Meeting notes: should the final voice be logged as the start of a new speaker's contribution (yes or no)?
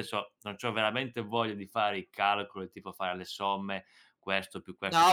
yes